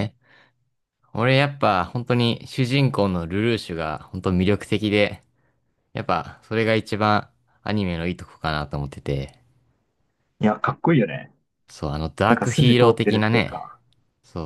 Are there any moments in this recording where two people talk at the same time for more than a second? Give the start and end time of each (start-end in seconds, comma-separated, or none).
12.3-13.7